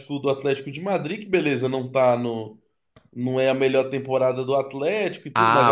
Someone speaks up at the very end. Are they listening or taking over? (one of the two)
taking over